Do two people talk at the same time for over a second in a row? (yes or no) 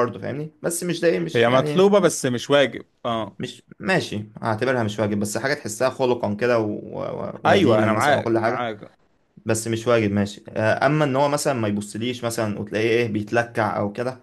yes